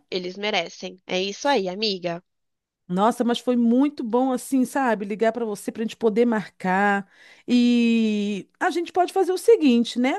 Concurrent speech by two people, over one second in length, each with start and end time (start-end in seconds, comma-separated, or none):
none